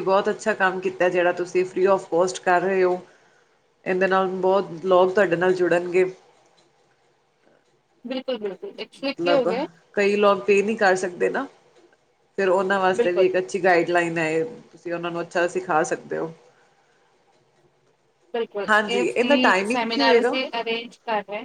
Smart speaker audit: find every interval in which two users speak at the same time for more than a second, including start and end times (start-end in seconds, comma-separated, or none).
18.7-20.4